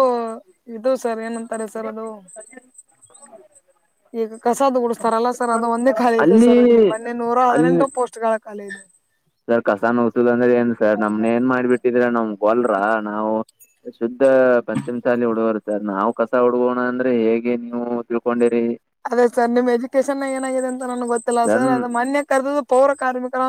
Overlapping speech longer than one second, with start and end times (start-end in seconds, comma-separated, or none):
none